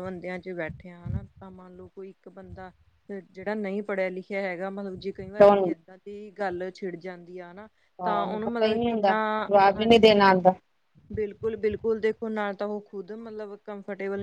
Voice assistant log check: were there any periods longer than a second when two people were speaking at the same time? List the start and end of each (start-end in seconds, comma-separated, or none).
8.4-10.1